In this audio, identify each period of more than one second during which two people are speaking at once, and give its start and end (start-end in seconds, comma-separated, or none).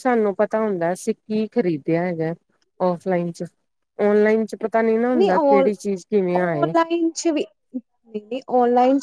none